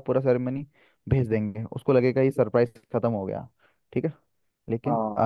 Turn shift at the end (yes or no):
no